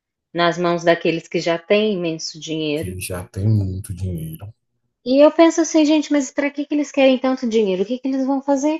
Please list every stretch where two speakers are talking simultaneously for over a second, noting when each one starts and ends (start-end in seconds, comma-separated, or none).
none